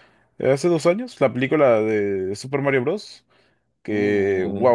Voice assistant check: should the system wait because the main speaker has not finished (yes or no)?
yes